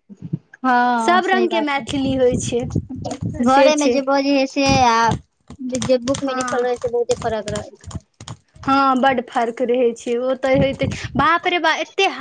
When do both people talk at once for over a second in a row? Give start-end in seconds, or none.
1.1-2.6